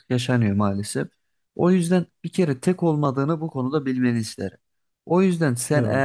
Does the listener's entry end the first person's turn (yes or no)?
no